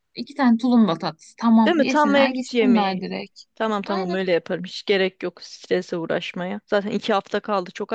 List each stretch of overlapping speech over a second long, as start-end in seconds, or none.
1.6-3.1